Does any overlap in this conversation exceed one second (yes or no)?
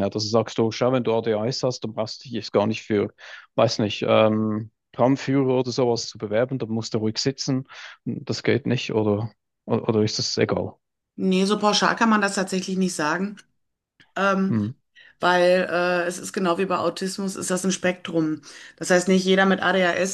no